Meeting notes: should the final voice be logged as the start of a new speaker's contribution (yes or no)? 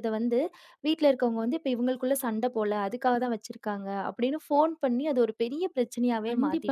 yes